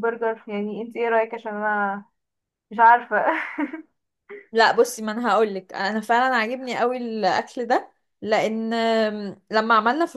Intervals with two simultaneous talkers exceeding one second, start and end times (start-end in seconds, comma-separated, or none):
none